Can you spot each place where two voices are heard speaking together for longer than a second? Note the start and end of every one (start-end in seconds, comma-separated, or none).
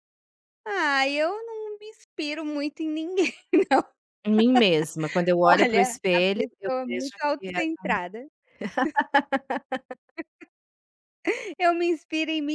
5.4-7.6